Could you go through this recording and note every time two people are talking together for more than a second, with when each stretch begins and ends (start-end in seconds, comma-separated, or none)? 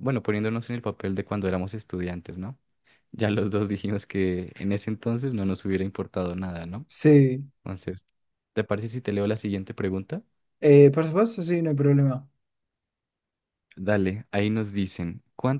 none